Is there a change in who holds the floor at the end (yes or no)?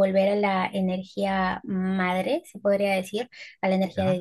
no